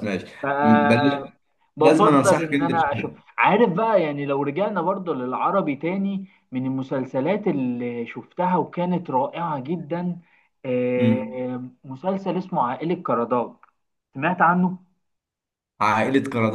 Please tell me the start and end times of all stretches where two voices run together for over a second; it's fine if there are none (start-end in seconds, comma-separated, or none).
1.8-3.2